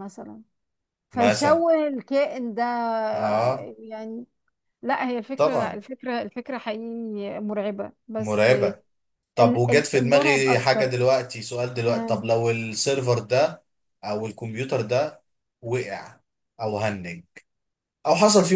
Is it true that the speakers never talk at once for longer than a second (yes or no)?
no